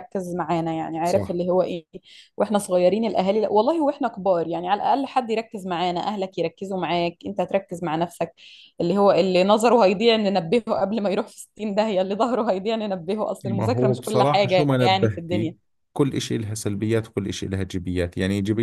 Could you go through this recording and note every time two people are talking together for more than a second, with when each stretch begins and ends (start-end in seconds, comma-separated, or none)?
13.4-15.5